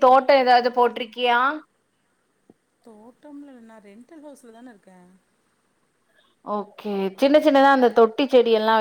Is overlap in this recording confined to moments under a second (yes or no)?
yes